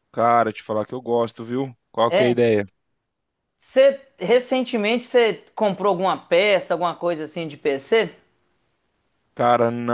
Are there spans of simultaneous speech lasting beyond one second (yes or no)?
no